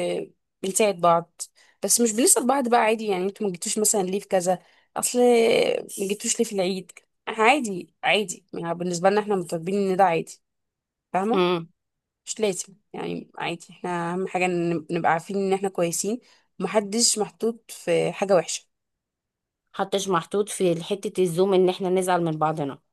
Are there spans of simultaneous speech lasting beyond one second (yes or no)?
no